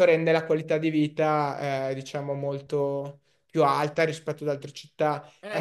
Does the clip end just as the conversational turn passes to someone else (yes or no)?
yes